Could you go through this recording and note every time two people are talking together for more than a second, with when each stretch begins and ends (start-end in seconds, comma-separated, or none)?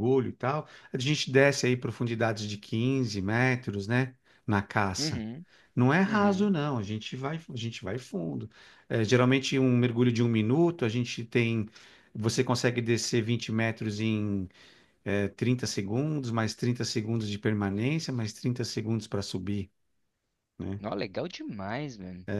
none